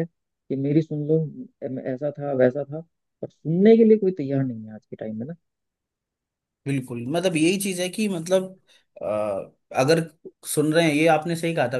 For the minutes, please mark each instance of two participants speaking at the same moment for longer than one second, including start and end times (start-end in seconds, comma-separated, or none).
none